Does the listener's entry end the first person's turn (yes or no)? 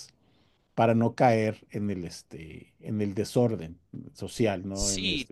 yes